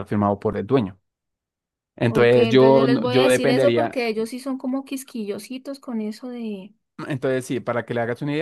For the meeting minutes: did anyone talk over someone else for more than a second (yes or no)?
yes